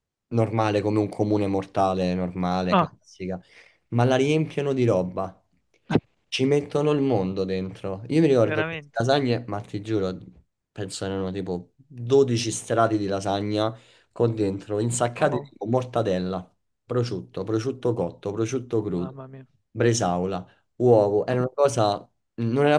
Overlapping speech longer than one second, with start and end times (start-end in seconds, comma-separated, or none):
none